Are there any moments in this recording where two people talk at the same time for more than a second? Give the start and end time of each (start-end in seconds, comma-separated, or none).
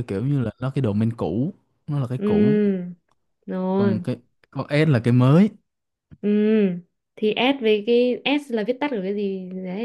none